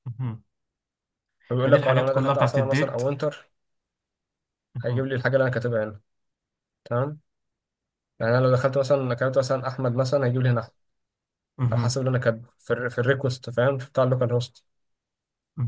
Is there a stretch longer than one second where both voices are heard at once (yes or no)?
yes